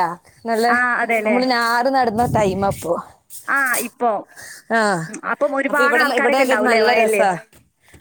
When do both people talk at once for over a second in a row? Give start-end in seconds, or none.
none